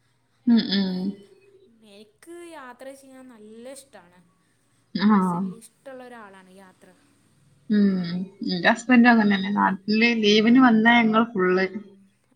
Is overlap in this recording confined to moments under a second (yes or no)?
yes